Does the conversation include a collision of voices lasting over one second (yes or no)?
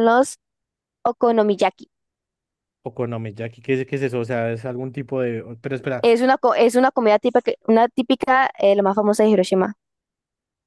no